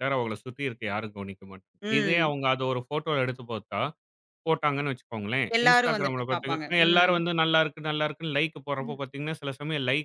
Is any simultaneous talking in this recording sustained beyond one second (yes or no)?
yes